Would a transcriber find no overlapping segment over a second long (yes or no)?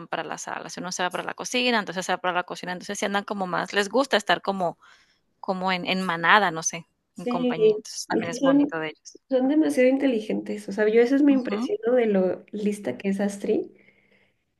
no